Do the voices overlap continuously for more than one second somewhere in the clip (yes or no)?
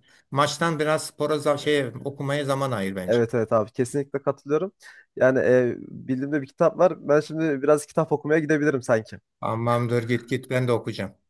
no